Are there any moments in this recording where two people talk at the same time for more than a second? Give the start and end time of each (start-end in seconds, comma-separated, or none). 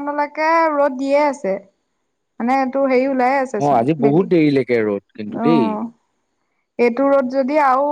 none